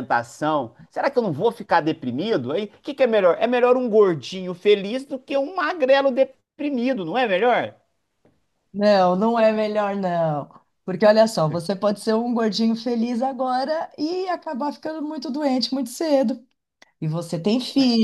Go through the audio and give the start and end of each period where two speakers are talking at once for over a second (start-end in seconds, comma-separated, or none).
none